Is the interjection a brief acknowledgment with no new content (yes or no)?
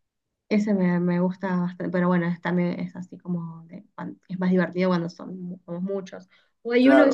yes